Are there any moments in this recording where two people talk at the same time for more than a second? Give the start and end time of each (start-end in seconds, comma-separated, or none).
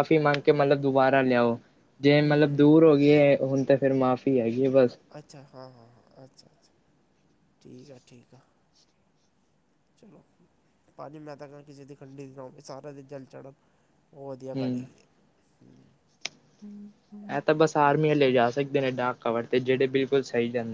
none